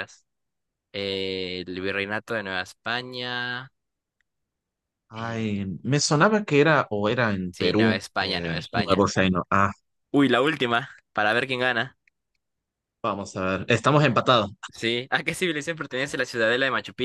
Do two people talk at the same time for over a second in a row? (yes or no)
yes